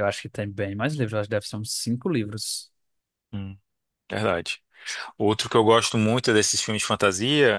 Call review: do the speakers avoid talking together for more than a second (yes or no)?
yes